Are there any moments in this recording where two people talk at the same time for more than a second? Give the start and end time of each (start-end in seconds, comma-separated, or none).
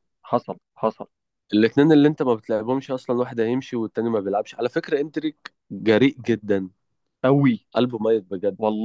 none